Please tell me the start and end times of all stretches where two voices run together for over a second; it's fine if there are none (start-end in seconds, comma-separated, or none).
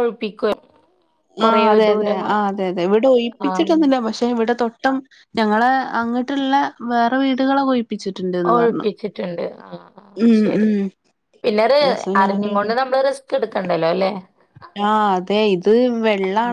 none